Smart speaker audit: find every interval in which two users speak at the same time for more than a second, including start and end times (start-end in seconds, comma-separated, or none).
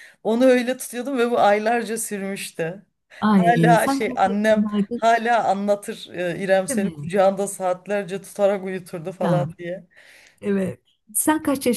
3.3-5.0